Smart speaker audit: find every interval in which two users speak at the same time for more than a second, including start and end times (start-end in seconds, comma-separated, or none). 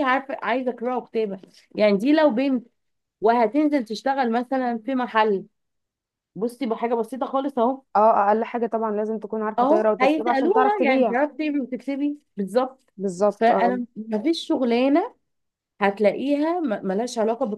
9.6-11.2